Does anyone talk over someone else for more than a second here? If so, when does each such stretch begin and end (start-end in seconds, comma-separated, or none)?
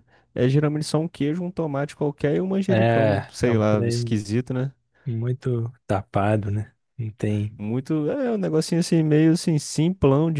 2.7-4.2